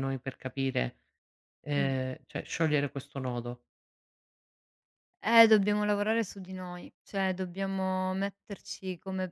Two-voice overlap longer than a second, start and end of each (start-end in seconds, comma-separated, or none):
none